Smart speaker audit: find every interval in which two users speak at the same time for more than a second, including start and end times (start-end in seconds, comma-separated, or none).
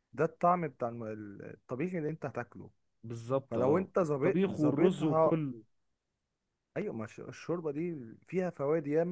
3.5-5.4